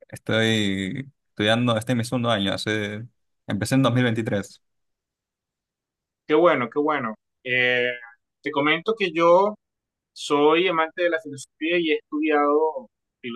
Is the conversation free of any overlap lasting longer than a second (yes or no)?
yes